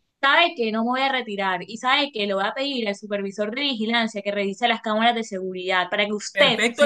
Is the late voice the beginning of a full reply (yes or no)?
yes